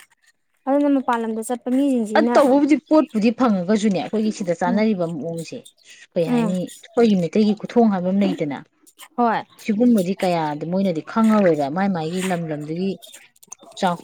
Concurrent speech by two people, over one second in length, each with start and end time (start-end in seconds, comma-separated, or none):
none